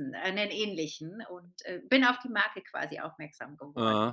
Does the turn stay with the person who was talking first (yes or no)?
no